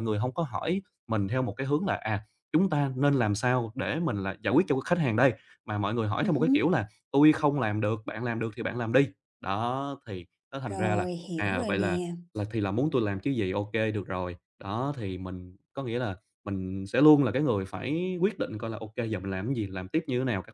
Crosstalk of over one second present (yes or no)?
yes